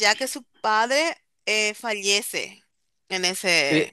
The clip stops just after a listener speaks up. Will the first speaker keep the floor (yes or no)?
no